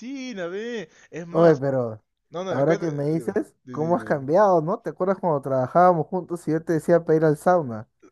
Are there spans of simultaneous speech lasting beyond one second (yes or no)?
yes